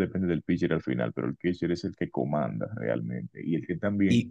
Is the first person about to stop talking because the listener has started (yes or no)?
no